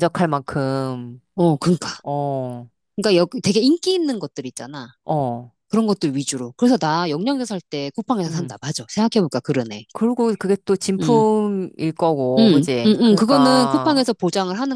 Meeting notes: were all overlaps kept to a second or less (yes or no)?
no